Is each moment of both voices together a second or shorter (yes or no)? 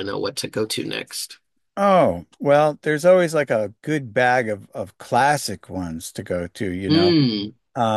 yes